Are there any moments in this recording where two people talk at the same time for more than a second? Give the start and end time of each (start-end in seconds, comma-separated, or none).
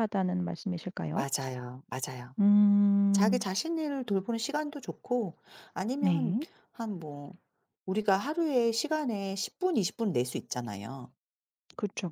none